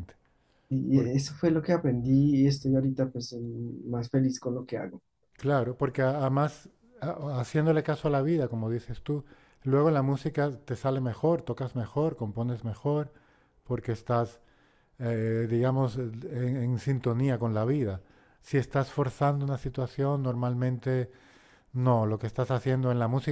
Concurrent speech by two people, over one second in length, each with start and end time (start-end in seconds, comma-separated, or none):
none